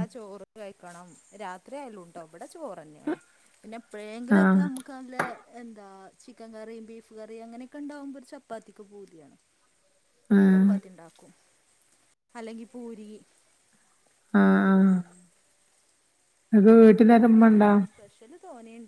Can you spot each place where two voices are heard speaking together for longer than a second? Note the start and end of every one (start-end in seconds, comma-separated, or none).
none